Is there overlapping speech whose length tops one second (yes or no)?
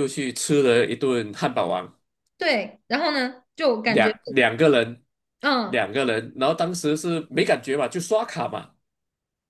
no